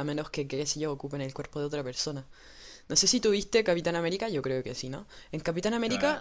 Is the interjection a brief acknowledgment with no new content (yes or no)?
yes